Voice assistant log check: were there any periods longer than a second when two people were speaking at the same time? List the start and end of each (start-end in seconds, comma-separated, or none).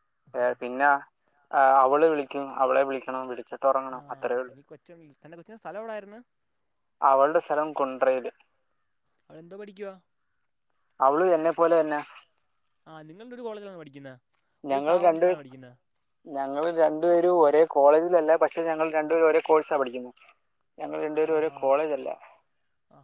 none